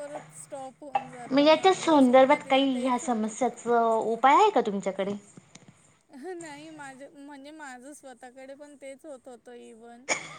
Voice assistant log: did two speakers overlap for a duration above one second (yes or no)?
yes